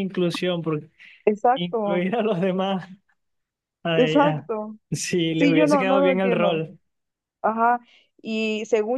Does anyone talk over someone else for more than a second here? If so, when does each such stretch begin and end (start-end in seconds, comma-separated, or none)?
5.4-6.6